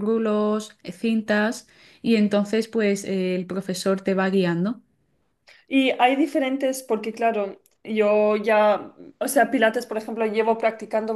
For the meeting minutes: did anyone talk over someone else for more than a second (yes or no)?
no